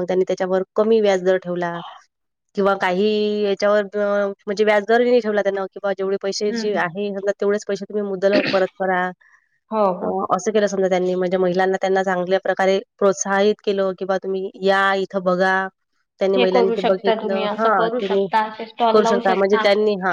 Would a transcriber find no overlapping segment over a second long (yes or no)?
no